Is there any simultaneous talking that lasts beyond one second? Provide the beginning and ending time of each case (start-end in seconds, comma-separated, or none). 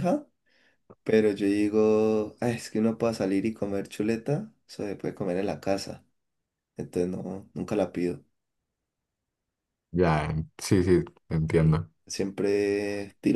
none